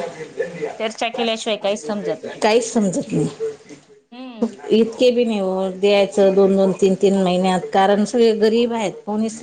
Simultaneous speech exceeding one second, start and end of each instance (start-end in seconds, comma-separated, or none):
none